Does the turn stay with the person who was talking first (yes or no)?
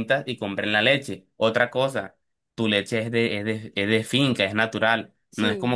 yes